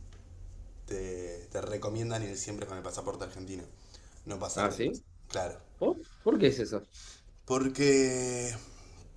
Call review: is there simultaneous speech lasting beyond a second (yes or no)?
no